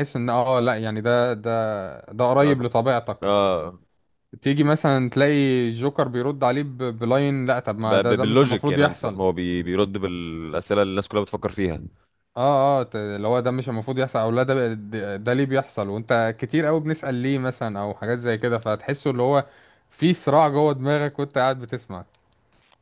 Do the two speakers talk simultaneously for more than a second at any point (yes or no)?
yes